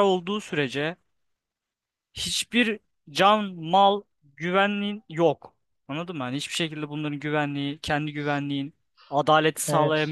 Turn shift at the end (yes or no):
no